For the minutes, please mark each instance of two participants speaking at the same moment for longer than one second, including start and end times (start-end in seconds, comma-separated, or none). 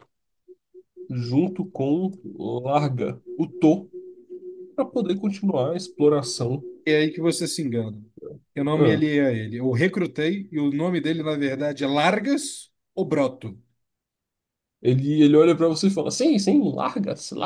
none